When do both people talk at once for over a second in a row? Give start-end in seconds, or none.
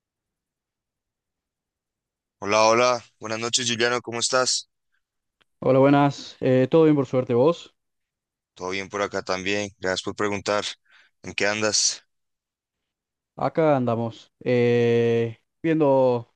none